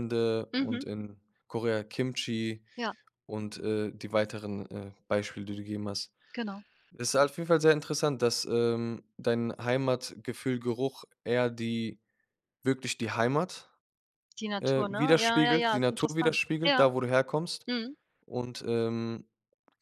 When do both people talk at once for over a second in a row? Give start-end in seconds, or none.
14.6-16.9